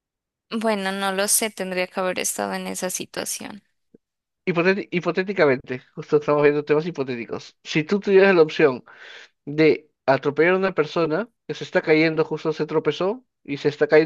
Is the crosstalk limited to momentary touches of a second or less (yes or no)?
yes